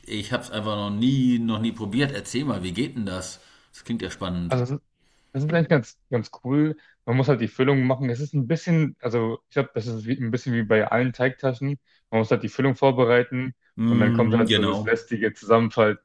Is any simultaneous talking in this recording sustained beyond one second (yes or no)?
yes